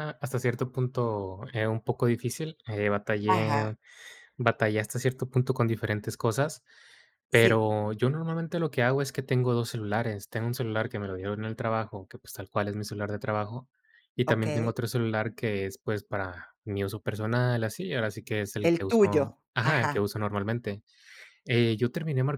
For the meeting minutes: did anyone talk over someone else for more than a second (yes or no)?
yes